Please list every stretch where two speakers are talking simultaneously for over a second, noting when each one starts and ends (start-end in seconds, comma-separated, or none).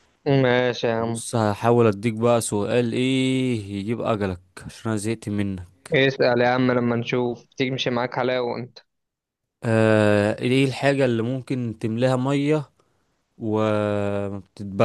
none